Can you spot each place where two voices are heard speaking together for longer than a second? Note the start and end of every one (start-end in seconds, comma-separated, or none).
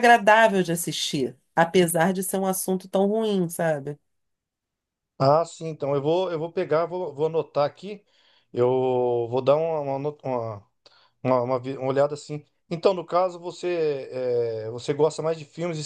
none